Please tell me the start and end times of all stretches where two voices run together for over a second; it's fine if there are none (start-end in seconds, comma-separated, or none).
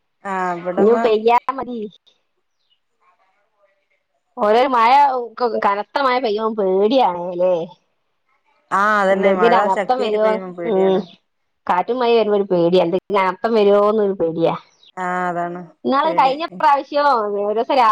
9.1-11.0